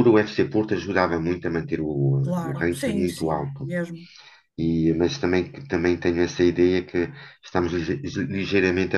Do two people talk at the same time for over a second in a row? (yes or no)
yes